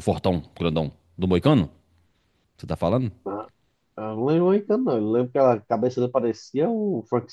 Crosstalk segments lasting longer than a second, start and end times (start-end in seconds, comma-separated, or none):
none